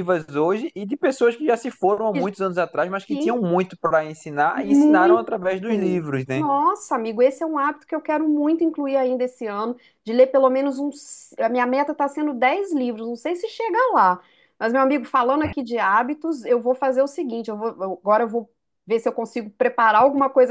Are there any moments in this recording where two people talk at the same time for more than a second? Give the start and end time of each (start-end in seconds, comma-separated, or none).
4.5-6.4